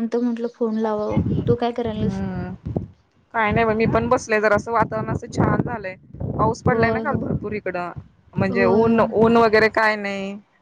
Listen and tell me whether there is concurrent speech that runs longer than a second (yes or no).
no